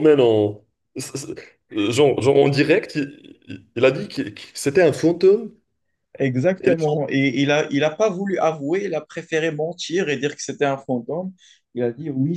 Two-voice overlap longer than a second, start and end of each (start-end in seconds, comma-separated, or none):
none